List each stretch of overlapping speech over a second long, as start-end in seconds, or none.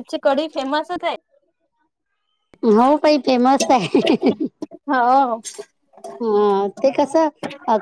none